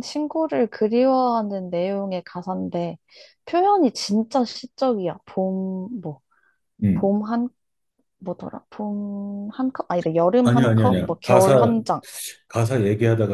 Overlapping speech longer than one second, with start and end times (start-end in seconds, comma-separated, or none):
10.4-11.8